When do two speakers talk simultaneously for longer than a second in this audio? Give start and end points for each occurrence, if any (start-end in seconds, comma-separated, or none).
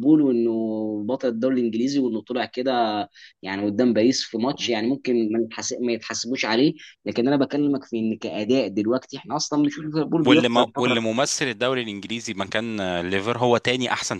9.5-11.0